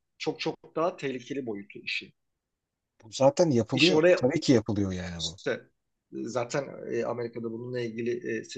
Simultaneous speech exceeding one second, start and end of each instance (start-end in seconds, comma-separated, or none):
none